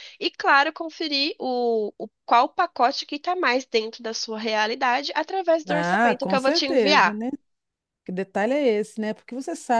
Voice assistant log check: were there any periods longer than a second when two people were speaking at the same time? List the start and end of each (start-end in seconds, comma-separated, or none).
5.7-7.2